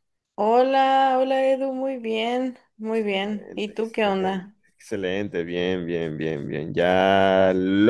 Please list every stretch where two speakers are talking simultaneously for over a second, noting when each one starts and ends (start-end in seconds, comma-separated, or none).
3.1-4.5